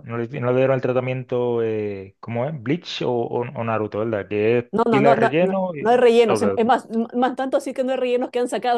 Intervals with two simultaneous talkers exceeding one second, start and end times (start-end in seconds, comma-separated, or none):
4.7-6.7